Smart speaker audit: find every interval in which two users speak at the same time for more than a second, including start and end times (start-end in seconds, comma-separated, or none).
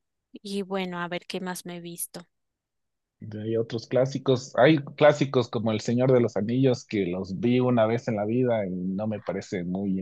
none